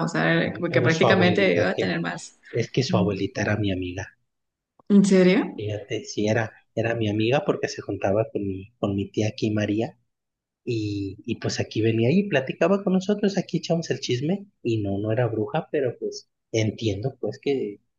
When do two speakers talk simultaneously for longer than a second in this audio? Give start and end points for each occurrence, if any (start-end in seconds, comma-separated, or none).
0.5-2.0